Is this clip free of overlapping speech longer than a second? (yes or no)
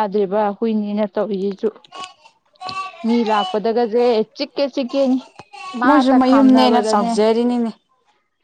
no